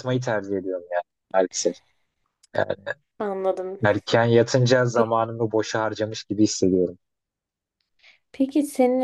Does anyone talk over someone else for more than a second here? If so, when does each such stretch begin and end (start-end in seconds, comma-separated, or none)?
none